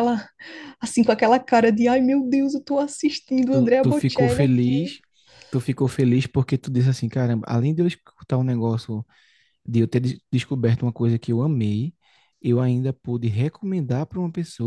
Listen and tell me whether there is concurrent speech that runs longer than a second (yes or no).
yes